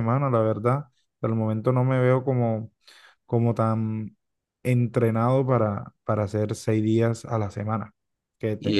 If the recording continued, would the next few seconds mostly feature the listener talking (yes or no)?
no